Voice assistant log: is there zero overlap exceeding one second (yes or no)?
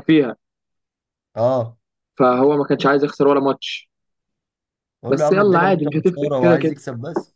no